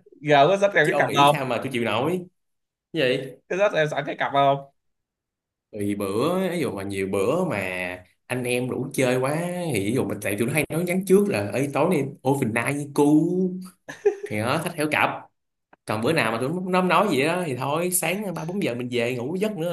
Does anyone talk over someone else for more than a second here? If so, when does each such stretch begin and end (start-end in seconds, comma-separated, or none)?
none